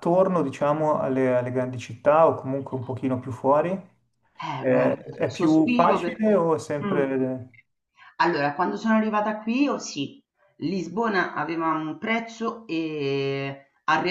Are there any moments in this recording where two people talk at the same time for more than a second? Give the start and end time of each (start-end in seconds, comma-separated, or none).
4.6-7.1